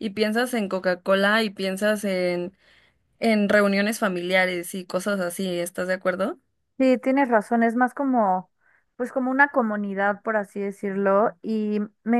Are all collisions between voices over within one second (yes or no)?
yes